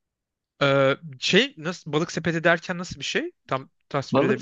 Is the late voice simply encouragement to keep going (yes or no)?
no